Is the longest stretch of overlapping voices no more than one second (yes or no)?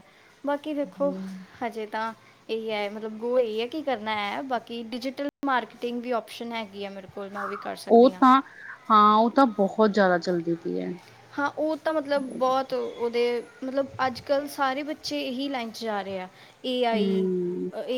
yes